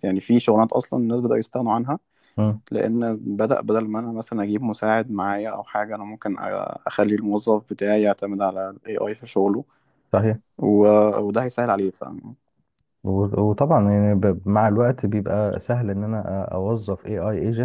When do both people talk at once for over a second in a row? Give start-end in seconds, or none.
none